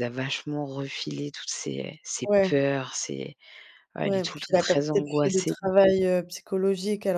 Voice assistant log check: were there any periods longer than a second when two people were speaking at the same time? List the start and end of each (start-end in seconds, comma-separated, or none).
4.0-5.5